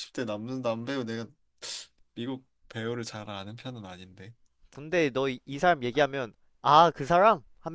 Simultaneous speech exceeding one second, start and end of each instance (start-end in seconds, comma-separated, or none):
none